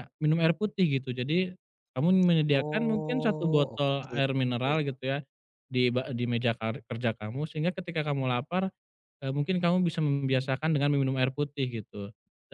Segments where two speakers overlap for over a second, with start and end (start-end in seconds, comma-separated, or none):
2.5-4.2